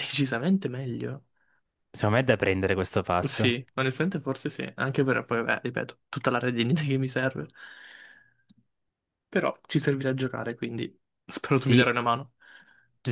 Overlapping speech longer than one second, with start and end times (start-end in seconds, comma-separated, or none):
none